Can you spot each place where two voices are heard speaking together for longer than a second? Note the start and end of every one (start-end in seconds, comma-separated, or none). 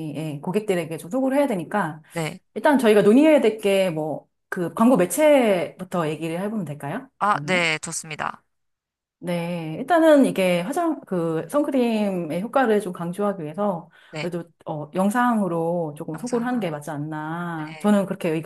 none